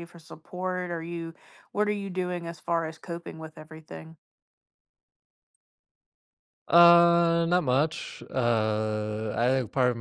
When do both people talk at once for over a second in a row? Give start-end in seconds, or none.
none